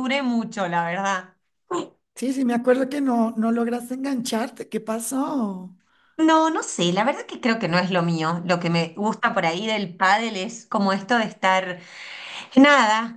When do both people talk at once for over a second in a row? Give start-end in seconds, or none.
none